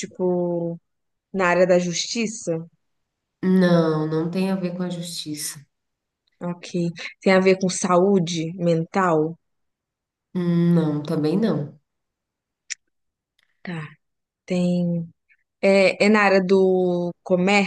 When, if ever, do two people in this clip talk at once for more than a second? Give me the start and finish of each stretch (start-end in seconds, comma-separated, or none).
none